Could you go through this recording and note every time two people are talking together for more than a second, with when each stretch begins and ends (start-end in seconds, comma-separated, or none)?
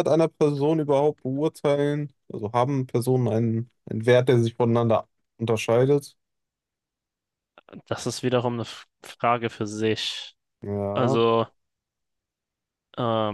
none